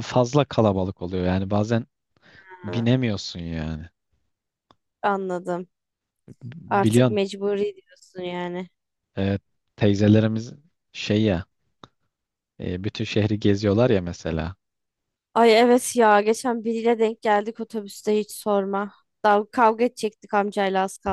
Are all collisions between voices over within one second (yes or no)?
yes